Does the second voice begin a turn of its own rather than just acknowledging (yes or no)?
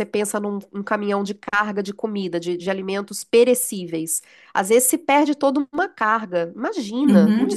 yes